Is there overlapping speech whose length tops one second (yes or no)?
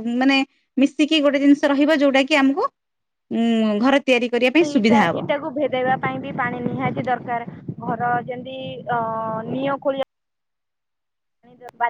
no